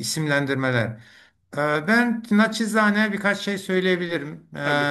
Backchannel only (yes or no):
yes